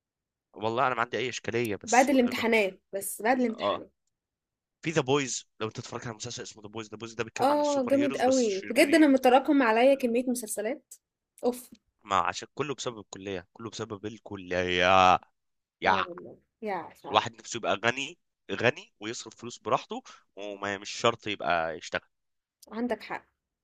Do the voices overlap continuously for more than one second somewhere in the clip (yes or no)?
yes